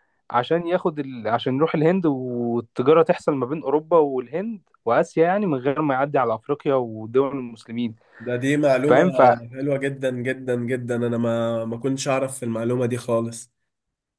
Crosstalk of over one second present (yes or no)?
no